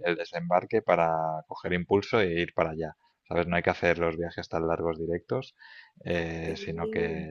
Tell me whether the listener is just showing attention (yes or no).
yes